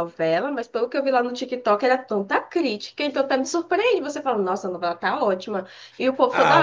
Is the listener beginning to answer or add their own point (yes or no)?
yes